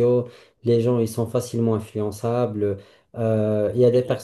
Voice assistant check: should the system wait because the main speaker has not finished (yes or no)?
yes